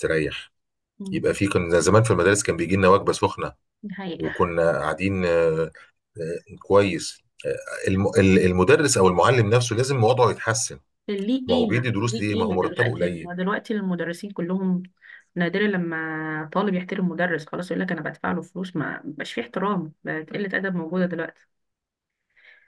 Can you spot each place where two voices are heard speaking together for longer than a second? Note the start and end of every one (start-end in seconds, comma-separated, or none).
11.5-13.3